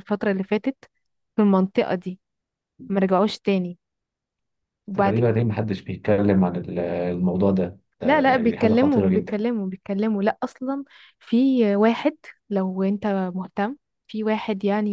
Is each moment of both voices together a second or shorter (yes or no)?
no